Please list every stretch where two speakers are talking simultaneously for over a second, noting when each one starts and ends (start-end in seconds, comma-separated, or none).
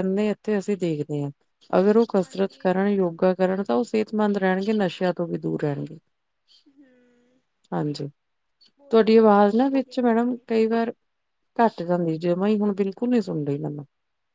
8.9-10.5